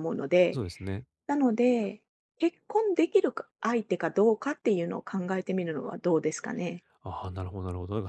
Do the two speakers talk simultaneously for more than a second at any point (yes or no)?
no